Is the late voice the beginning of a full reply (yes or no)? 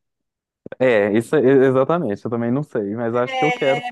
yes